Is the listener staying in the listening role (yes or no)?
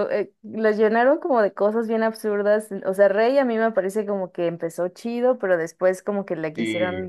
yes